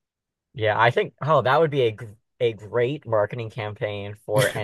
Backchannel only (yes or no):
yes